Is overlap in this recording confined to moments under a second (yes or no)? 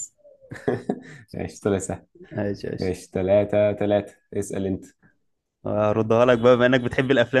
yes